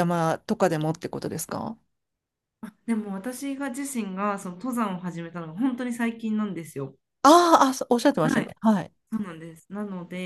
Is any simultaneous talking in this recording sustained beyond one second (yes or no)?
no